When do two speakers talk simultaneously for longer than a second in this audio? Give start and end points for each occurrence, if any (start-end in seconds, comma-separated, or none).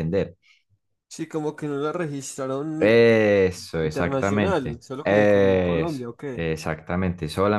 3.8-6.5